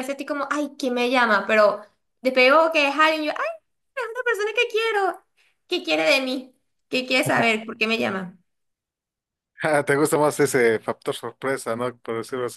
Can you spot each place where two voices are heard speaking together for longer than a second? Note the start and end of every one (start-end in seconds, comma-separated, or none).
none